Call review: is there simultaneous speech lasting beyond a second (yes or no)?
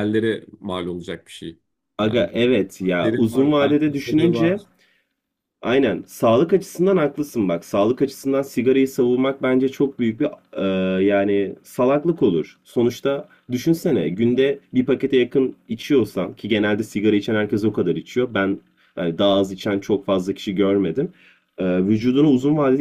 yes